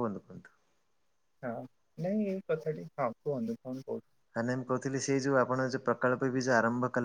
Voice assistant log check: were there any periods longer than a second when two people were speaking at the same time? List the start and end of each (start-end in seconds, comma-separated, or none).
none